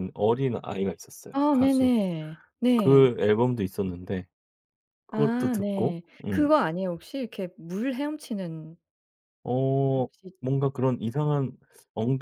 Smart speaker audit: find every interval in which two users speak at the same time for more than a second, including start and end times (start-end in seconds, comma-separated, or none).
5.1-6.5